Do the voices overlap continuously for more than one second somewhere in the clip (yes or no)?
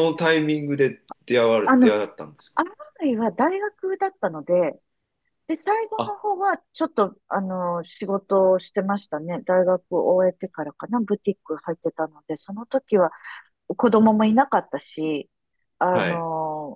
no